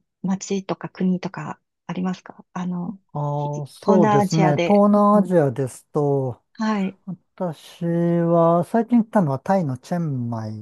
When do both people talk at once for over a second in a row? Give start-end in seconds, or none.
3.4-5.3